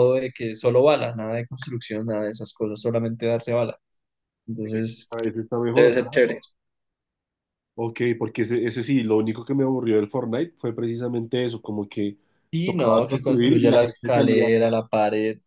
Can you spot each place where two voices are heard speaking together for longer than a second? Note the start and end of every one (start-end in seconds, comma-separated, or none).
12.6-14.5